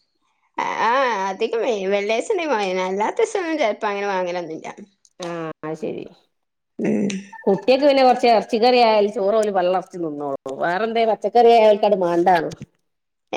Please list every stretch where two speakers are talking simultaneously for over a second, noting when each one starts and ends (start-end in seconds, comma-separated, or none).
none